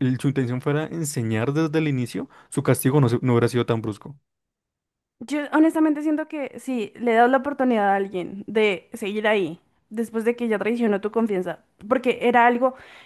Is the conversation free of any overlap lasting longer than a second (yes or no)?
yes